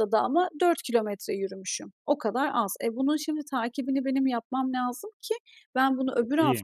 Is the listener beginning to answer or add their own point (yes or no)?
no